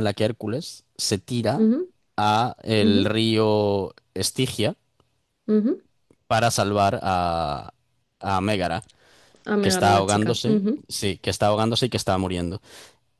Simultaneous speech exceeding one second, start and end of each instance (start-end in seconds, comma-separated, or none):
9.6-10.8